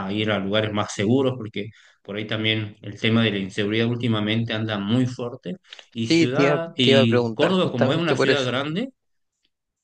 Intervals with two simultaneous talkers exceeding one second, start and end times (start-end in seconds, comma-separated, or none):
6.0-8.5